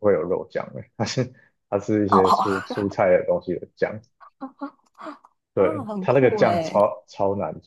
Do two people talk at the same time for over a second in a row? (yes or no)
yes